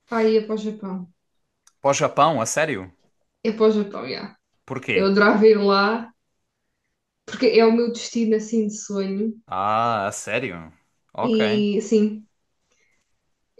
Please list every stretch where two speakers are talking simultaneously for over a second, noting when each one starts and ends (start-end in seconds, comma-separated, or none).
none